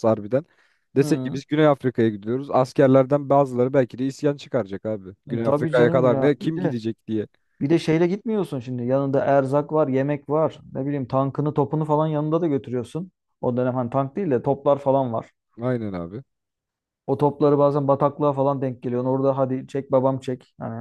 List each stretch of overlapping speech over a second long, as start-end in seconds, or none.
5.3-6.8